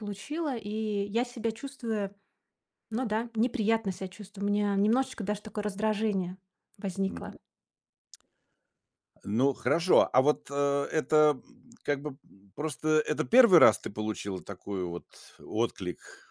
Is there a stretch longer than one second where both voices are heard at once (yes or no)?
no